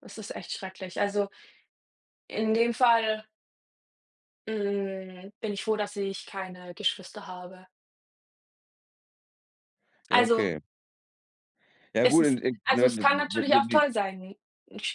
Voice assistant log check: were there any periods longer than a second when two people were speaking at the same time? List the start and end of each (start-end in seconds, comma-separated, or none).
12.0-13.8